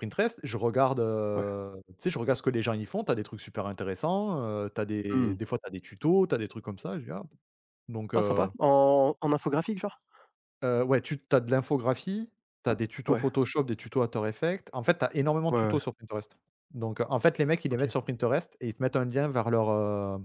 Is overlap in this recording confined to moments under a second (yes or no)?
yes